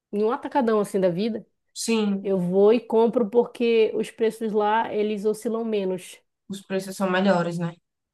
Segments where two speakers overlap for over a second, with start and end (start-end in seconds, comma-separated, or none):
none